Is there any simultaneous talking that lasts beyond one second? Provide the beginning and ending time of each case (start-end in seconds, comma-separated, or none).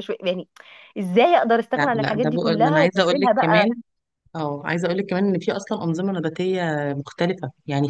1.8-3.7